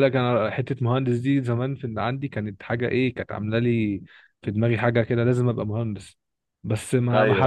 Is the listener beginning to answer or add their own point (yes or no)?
no